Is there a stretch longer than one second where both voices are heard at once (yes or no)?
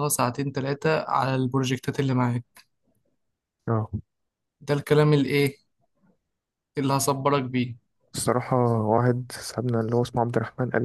no